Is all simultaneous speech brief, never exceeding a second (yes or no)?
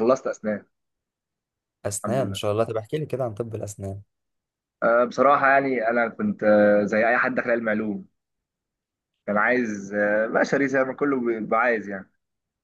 yes